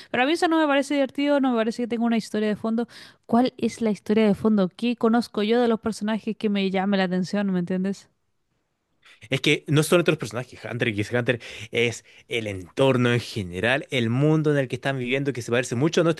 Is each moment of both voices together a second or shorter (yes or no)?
yes